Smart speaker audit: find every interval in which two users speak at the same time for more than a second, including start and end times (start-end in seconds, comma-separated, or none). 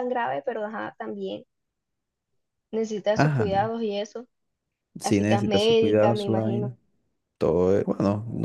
5.0-6.7